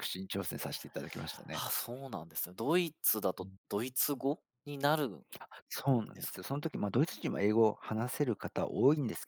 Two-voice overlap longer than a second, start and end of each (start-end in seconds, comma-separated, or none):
none